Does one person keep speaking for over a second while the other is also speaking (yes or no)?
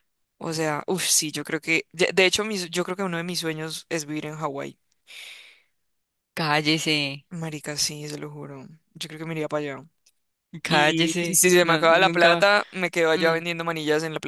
yes